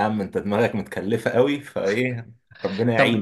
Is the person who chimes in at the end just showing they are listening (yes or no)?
no